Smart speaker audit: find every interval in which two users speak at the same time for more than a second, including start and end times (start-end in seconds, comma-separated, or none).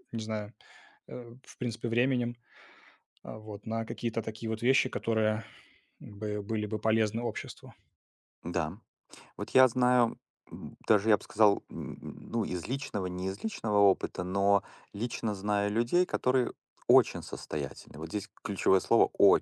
none